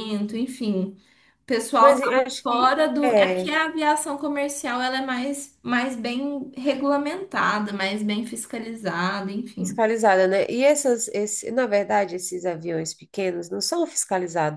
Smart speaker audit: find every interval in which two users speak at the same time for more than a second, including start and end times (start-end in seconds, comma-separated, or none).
1.8-3.5